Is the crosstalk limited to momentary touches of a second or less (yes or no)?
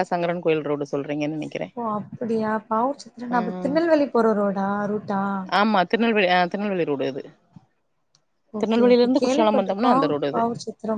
no